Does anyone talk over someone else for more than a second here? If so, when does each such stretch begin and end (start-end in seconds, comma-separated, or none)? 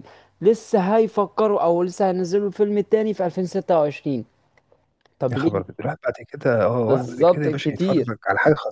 6.9-8.1